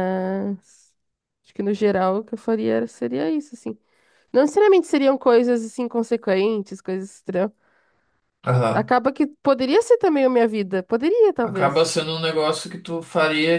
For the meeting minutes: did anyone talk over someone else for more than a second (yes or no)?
no